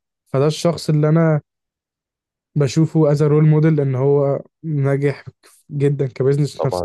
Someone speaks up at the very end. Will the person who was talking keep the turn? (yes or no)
no